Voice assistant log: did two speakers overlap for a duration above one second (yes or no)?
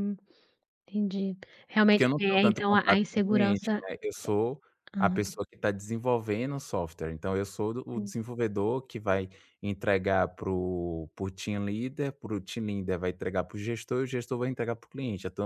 yes